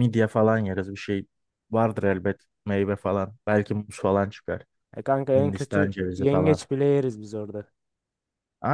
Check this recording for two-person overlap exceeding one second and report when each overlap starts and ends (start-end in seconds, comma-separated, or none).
5.3-6.6